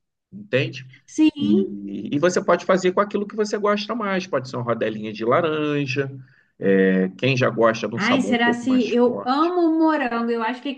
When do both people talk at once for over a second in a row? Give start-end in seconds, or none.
8.0-9.5